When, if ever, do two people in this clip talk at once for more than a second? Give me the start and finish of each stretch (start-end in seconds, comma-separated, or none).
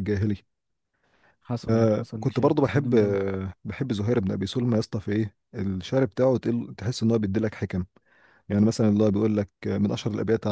1.7-3.2